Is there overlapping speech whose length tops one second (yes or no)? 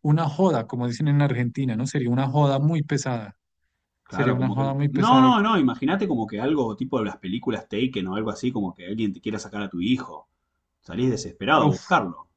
yes